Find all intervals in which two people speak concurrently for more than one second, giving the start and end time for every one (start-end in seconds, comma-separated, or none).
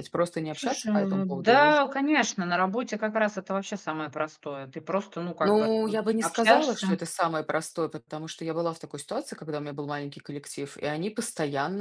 0.5-1.7, 5.4-6.9